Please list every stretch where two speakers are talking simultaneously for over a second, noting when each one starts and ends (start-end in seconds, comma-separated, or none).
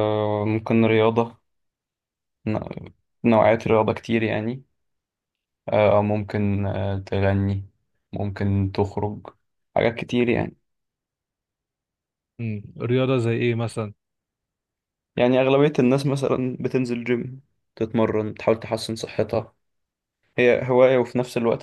none